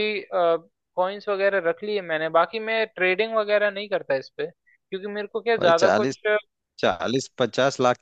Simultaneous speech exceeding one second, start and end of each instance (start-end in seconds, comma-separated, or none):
none